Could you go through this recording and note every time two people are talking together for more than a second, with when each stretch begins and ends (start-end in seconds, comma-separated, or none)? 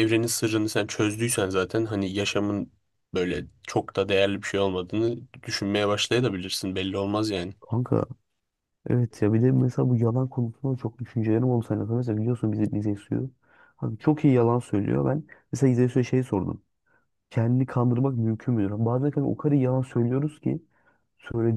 none